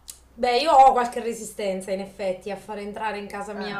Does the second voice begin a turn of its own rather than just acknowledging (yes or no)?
no